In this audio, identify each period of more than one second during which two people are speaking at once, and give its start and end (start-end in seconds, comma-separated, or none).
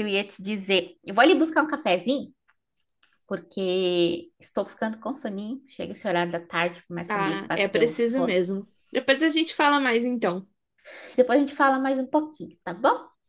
7.1-8.4